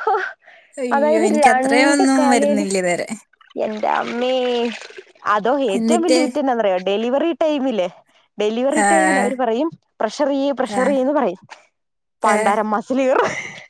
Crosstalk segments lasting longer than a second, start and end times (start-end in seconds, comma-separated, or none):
0.9-2.7